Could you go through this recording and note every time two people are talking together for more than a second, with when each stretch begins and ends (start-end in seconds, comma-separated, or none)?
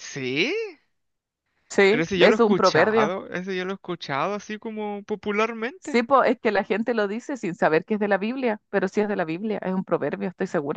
1.9-3.1